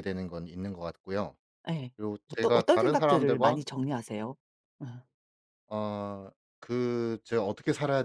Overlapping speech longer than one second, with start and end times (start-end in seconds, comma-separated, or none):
2.3-3.6